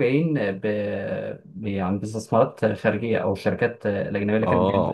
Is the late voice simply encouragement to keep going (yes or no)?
no